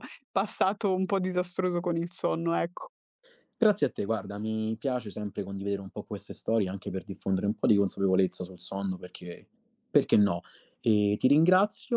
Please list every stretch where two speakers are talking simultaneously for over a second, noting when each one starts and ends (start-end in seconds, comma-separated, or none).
none